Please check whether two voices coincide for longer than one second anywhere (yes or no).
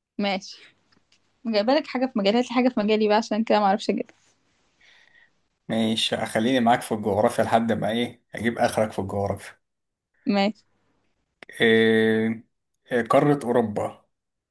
no